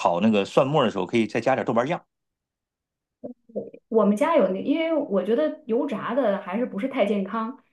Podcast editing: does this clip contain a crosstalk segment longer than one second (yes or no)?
no